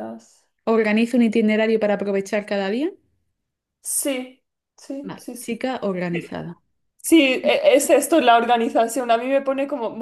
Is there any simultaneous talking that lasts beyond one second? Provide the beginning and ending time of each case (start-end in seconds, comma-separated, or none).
none